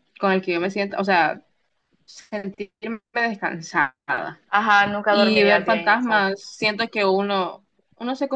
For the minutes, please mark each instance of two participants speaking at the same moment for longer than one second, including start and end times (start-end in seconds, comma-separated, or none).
5.1-6.4